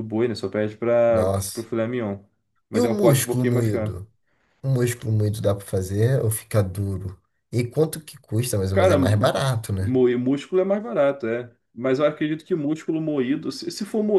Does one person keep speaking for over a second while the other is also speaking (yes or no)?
yes